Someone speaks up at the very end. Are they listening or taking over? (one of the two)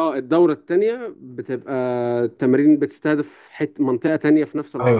taking over